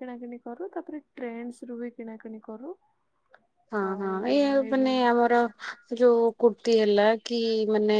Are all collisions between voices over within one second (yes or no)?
yes